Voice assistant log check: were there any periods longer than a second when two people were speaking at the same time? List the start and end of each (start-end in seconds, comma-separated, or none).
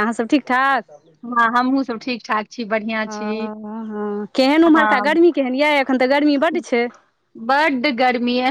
none